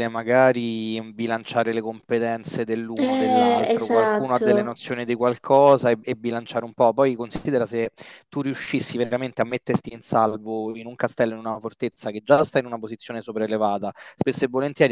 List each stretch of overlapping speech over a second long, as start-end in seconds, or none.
3.0-4.8